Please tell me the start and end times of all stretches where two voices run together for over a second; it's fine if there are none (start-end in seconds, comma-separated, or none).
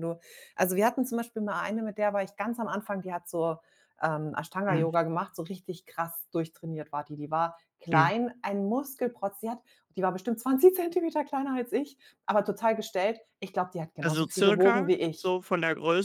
14.0-15.4